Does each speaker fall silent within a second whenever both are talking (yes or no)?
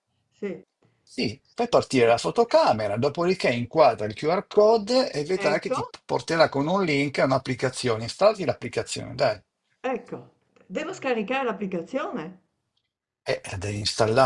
yes